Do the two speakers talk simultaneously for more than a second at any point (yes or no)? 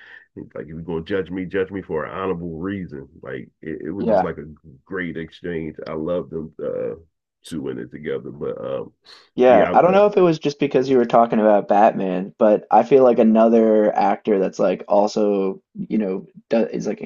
no